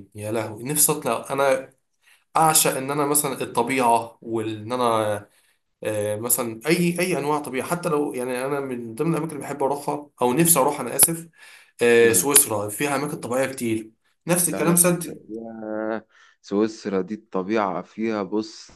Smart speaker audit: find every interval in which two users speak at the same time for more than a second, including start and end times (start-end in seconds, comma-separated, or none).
none